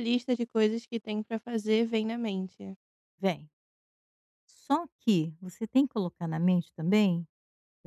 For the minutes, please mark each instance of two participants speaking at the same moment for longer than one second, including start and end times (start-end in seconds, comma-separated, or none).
none